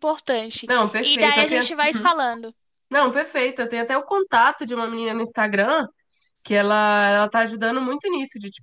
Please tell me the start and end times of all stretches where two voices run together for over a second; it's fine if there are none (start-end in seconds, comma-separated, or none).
0.7-2.1